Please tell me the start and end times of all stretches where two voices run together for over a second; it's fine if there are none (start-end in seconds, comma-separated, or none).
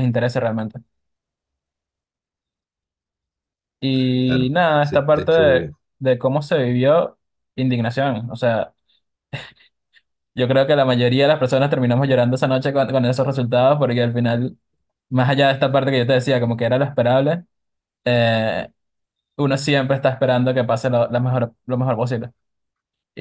4.2-5.8